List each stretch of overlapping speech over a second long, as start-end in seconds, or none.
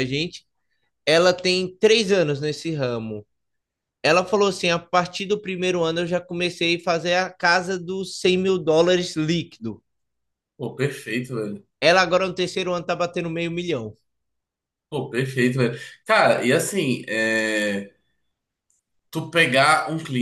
none